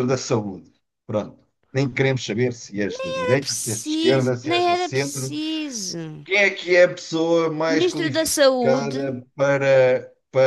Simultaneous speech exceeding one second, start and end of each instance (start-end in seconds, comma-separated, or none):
2.9-5.3, 7.7-9.1